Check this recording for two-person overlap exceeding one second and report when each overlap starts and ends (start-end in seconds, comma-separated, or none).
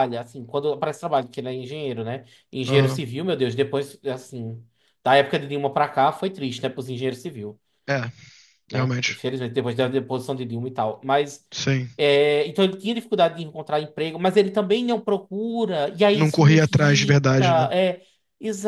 16.1-17.7